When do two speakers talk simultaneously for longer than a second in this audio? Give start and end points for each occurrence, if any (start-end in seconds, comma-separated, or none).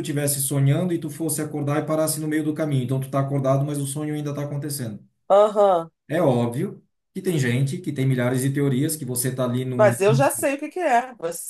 none